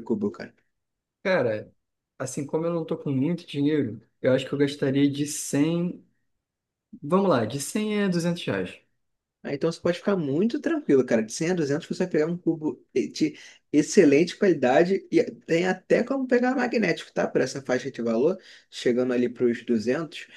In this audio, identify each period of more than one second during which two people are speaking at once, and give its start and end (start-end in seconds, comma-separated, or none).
none